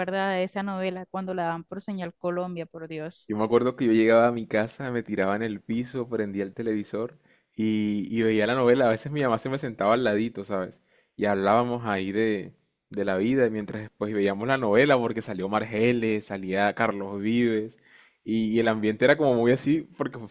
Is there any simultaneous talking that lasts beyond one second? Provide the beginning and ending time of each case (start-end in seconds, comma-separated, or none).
none